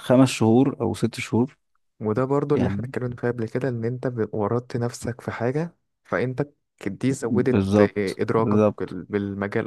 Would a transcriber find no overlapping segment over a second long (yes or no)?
no